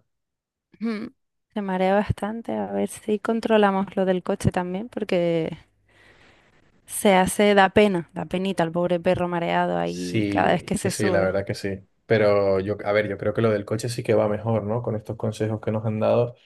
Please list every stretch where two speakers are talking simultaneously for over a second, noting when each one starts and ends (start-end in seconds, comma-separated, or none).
9.8-11.3